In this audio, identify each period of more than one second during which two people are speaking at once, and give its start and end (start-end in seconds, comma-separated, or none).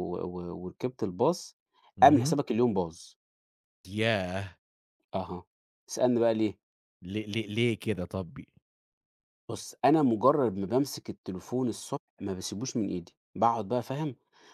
none